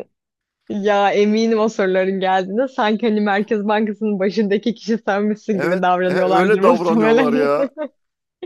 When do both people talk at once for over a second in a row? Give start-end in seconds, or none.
5.5-7.5